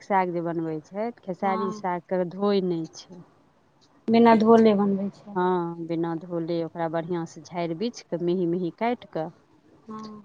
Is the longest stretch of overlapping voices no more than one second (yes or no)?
yes